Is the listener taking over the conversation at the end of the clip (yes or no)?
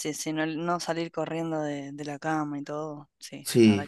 yes